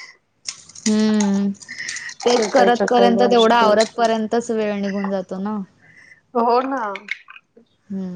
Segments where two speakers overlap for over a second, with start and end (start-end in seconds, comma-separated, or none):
2.2-3.7